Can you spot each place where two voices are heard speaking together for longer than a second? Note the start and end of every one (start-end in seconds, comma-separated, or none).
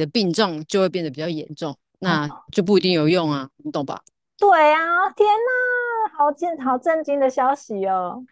none